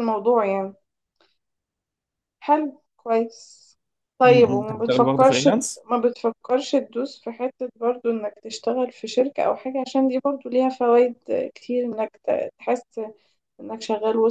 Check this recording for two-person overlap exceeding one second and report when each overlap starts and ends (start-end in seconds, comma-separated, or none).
4.2-5.5